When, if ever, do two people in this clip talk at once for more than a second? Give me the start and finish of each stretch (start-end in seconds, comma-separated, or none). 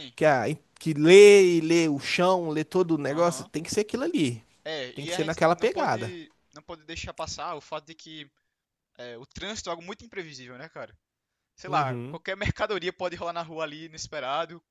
5.0-6.2